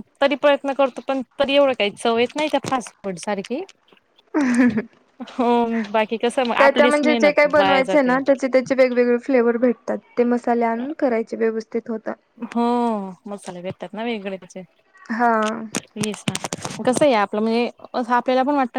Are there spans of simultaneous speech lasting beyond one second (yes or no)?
yes